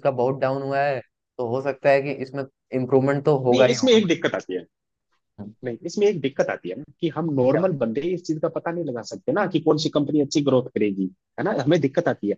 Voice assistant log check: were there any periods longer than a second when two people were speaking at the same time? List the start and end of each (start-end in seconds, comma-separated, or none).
none